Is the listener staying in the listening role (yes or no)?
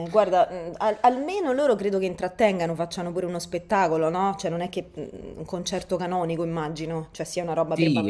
no